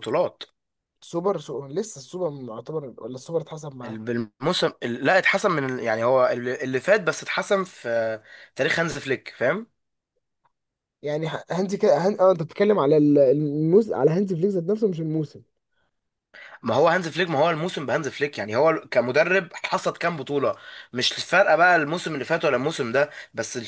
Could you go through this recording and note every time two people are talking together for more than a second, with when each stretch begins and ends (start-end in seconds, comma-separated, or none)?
none